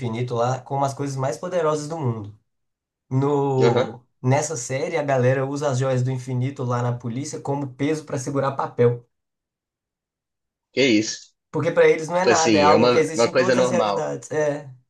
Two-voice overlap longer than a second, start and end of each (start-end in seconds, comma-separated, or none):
12.1-14.0